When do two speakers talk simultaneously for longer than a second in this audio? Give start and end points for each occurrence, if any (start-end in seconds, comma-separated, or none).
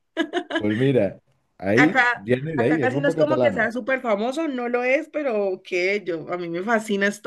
1.8-3.7